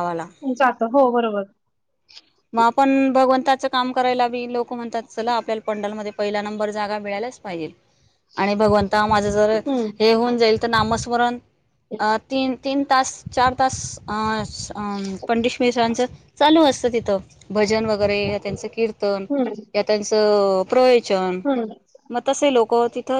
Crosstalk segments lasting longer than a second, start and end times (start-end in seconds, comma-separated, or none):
none